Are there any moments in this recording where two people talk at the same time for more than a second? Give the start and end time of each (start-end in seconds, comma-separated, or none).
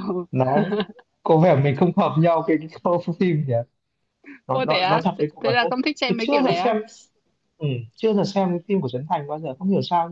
4.5-6.8